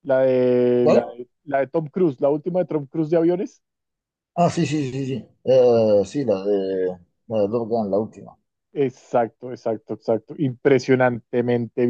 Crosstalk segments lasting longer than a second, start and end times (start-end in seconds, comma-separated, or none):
none